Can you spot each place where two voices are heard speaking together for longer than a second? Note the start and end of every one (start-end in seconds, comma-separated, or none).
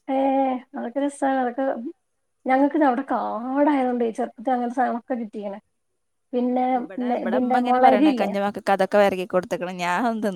6.4-8.3